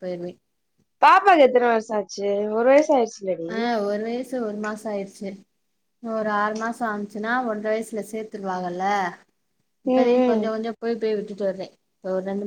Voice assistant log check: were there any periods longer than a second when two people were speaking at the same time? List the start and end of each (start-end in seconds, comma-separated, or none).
none